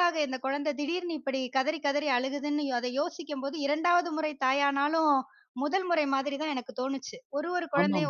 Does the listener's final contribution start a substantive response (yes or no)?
no